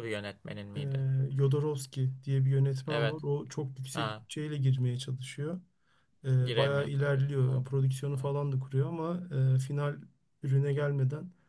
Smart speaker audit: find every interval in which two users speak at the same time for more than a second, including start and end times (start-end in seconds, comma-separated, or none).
6.4-8.3